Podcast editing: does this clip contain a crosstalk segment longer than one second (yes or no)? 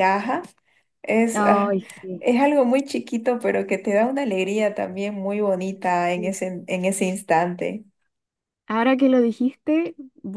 no